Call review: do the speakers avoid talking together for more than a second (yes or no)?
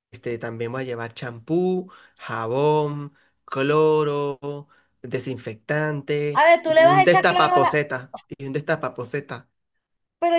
no